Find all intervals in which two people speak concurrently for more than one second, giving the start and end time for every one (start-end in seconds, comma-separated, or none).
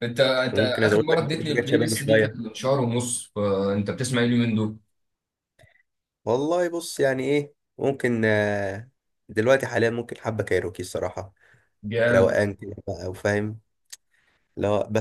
0.5-2.4